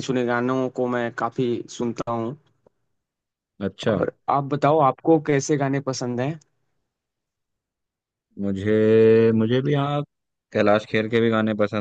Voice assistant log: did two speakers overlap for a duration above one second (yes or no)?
no